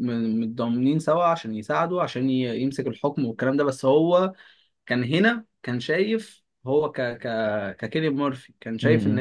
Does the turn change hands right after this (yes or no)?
no